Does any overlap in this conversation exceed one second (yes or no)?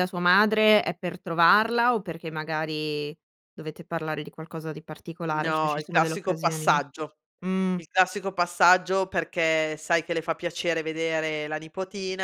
yes